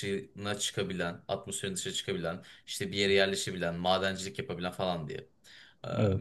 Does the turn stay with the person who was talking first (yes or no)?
yes